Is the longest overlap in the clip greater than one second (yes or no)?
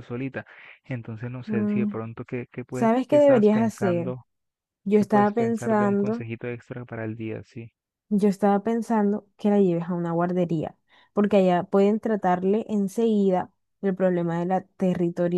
yes